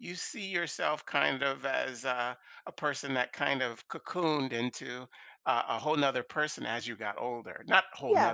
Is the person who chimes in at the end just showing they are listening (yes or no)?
yes